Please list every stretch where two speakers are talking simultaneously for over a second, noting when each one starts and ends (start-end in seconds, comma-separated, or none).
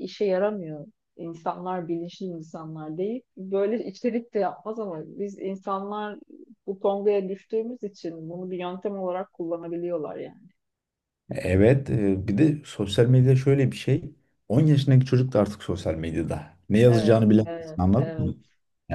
16.9-18.3